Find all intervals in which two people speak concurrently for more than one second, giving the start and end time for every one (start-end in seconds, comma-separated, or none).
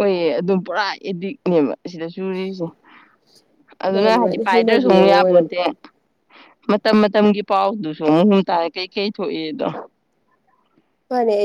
3.9-5.5